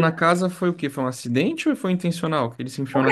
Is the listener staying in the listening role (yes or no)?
no